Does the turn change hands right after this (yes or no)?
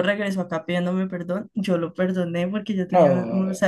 no